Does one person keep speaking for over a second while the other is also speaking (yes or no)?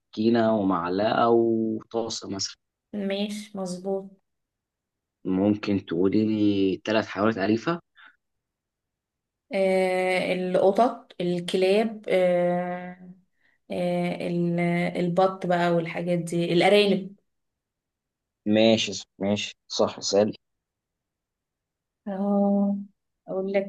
no